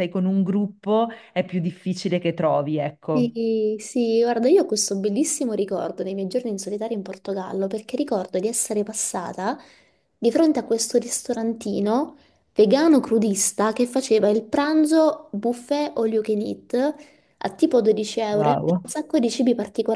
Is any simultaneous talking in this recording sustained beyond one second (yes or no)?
no